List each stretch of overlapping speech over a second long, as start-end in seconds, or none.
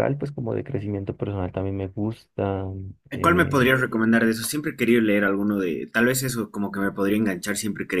none